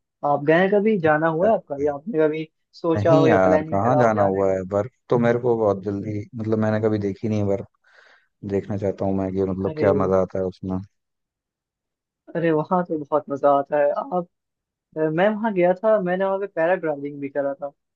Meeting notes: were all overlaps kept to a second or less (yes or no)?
no